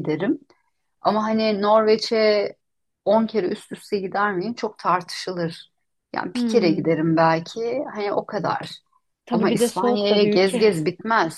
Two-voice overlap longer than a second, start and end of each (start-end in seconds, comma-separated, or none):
9.3-10.7